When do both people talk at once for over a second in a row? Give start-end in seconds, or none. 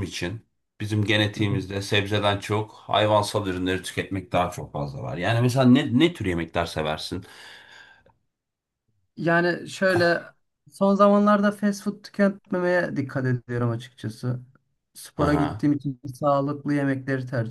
none